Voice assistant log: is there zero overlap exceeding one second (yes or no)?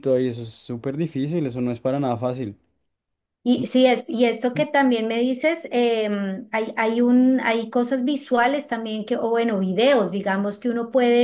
yes